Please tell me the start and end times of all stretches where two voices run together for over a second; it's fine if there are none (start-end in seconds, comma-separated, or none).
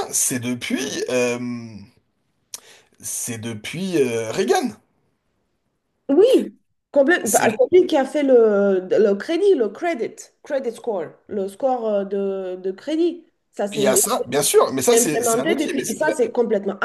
14.9-16.1